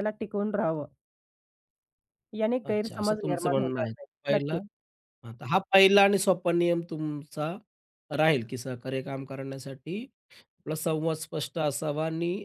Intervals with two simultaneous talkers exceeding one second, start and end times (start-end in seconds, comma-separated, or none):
2.6-4.6